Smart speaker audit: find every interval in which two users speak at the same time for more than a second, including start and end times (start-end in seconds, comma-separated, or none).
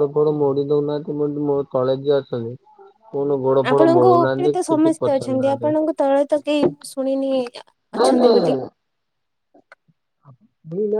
3.7-5.7